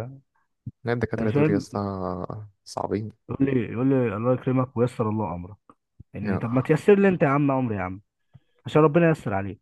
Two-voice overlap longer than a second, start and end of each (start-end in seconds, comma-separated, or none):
none